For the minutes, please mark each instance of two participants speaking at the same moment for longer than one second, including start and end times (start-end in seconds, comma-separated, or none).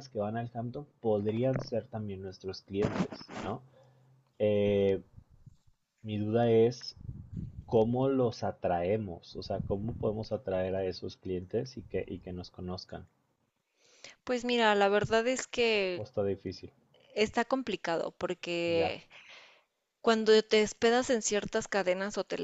none